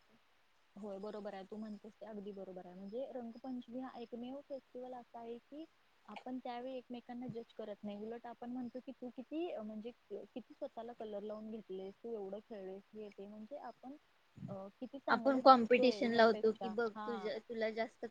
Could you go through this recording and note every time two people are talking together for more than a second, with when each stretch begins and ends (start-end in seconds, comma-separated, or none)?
15.1-17.1